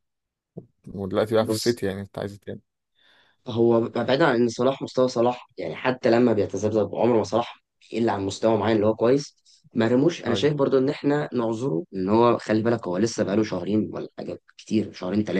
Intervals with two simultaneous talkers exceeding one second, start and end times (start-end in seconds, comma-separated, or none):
none